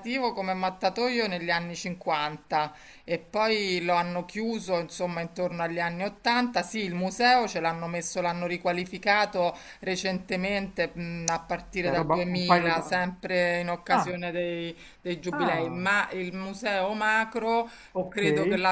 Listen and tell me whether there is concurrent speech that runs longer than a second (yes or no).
yes